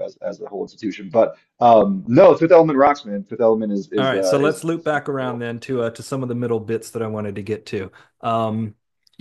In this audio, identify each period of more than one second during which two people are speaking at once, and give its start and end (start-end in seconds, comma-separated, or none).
4.0-5.4